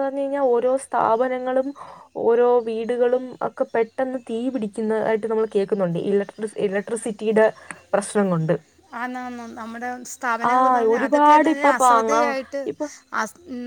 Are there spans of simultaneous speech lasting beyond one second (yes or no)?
yes